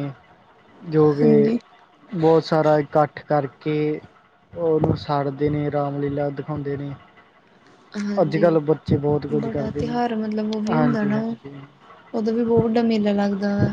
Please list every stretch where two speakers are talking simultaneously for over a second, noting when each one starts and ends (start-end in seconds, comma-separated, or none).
none